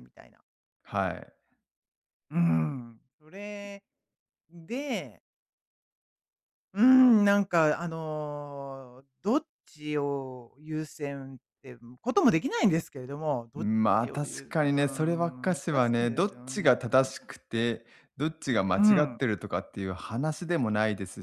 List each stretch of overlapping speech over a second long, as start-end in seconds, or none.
13.6-16.8